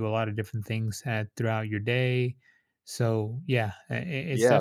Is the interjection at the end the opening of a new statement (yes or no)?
yes